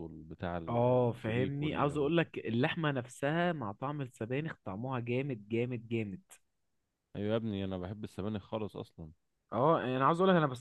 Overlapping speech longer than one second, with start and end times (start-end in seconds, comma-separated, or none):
0.7-2.1